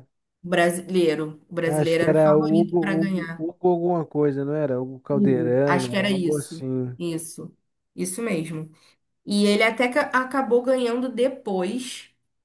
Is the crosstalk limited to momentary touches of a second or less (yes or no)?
no